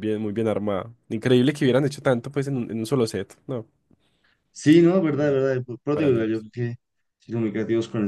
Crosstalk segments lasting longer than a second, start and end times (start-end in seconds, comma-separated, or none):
none